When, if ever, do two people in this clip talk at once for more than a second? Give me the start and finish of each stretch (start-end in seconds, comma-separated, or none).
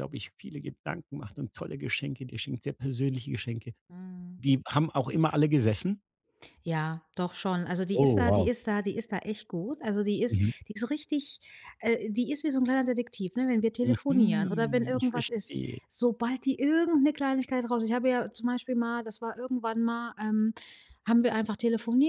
13.8-15.8